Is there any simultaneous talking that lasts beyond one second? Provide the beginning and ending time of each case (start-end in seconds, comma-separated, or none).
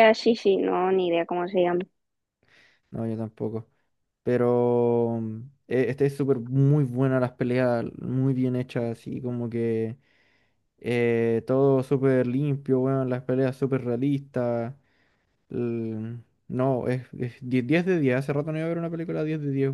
none